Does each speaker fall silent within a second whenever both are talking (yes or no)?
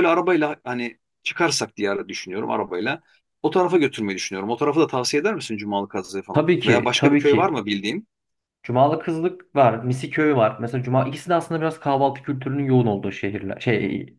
no